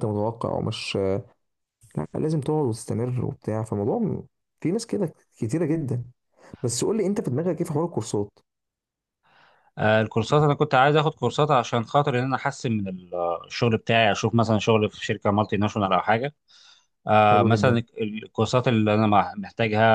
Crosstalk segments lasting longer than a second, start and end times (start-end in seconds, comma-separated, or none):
none